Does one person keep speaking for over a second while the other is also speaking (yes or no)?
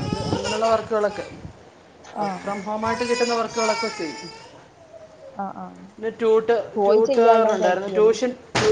yes